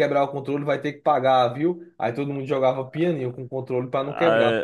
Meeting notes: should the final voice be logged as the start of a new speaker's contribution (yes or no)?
no